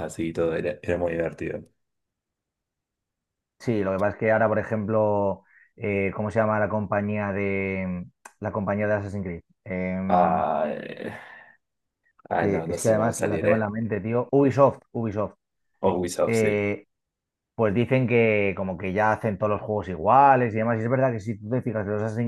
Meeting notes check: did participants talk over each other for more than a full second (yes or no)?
yes